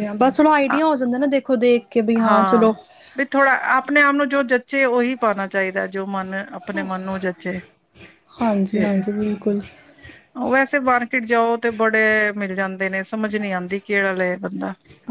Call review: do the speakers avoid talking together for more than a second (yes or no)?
yes